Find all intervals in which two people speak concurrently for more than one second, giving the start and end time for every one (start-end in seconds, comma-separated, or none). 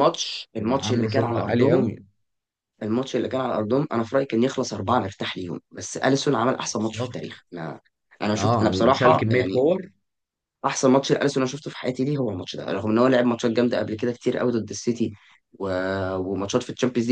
0.6-1.9, 8.4-9.6